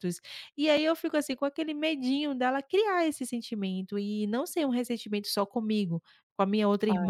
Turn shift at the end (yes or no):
no